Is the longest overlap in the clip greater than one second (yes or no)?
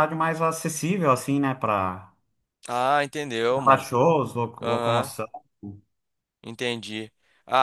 no